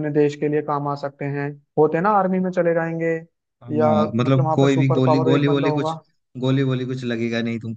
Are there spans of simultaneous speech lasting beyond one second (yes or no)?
yes